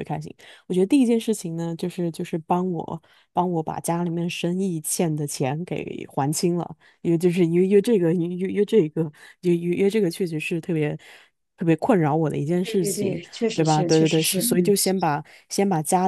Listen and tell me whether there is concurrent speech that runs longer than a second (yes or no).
yes